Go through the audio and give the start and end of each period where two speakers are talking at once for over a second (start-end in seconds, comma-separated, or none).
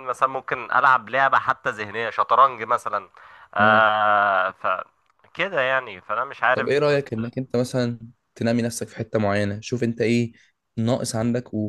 none